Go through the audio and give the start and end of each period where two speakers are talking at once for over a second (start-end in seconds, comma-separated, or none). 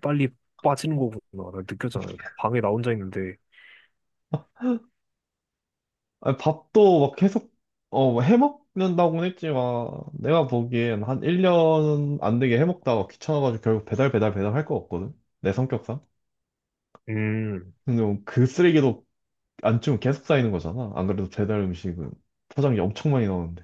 none